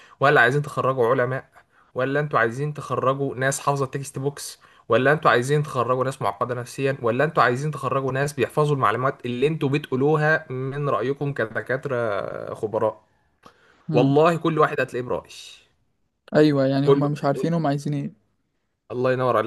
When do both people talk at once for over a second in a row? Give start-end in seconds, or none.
none